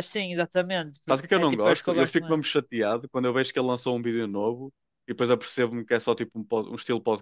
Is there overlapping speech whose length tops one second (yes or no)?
yes